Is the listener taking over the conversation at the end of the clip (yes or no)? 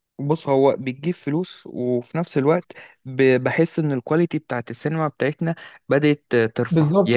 yes